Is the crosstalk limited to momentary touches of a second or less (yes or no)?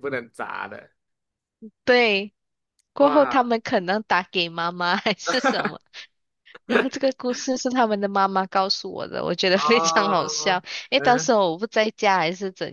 no